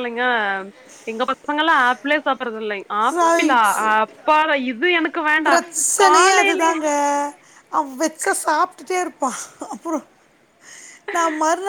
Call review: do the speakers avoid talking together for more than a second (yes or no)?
yes